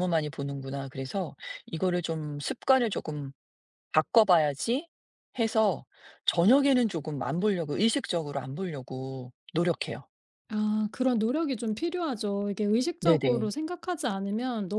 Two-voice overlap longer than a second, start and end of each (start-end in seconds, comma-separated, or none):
none